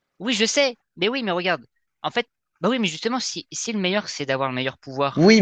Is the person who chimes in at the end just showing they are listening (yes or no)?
no